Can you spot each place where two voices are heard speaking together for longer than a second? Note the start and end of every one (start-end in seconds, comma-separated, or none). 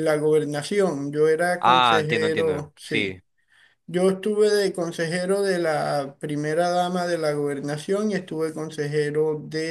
1.6-3.2